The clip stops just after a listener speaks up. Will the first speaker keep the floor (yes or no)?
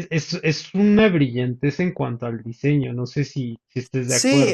no